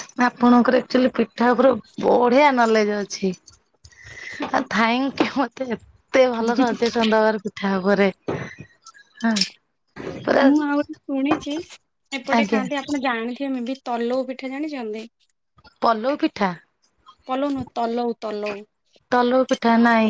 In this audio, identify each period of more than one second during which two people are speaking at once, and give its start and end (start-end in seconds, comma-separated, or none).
none